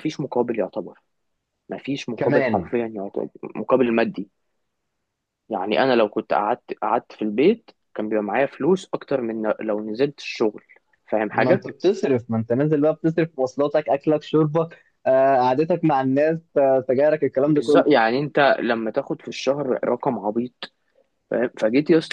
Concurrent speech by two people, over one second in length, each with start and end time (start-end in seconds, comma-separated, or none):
none